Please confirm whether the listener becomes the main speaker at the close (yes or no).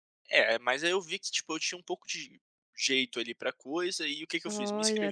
no